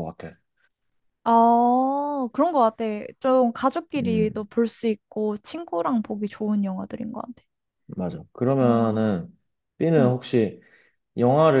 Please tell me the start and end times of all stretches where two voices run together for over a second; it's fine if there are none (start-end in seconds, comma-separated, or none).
none